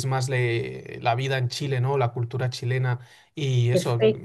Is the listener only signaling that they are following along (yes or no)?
yes